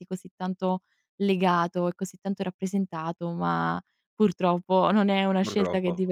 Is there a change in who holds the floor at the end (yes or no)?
no